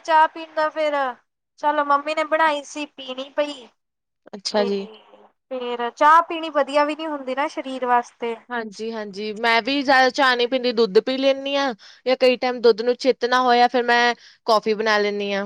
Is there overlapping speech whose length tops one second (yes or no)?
no